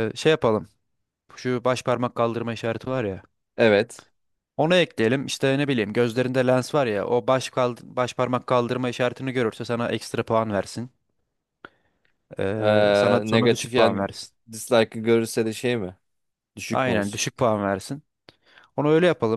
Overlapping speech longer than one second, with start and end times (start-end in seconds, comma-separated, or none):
12.6-14.0